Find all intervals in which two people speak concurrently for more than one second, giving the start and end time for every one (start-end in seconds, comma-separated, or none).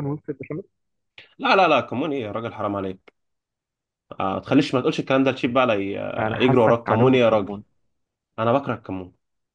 6.2-7.6